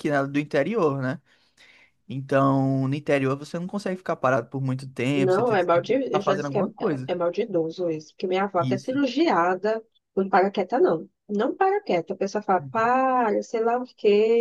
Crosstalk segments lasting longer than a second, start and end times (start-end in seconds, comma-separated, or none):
5.1-7.1